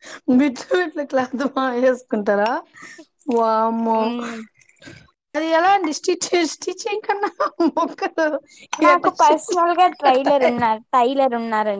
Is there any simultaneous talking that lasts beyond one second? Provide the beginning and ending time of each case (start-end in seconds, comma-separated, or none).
8.9-10.3